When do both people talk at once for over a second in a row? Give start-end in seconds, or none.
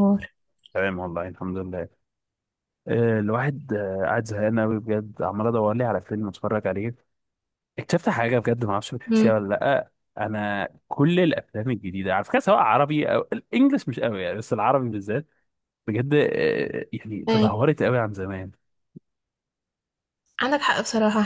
none